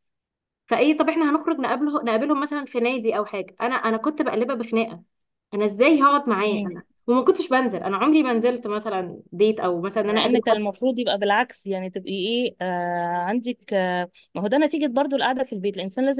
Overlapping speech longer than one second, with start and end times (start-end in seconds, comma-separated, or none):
none